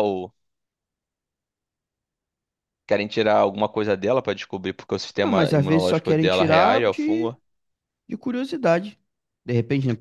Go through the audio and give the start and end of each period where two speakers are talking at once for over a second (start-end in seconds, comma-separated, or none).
5.2-7.3